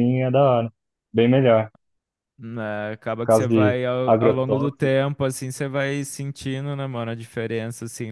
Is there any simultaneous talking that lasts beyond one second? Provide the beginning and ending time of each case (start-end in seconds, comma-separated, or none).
3.2-5.0